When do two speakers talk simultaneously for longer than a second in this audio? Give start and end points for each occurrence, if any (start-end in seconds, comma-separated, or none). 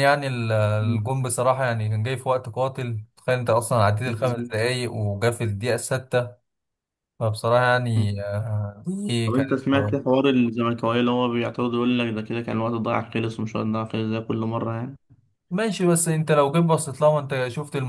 none